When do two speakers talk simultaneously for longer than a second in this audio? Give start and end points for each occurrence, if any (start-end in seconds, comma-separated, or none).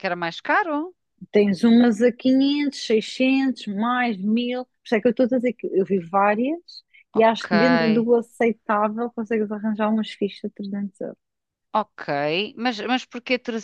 none